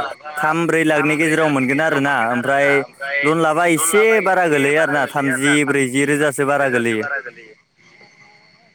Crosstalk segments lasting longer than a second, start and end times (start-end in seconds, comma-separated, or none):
1.0-2.7, 3.8-7.0